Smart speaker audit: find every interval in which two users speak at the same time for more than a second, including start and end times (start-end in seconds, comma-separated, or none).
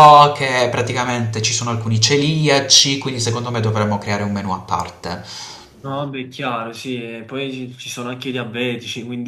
none